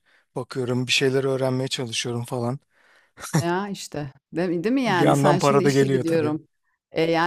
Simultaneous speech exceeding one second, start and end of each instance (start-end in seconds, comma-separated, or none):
4.9-6.3